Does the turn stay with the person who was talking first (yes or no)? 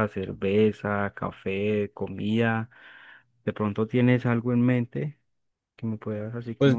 no